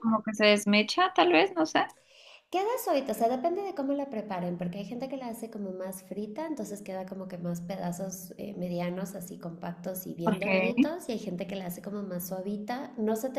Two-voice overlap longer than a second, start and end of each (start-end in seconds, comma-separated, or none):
none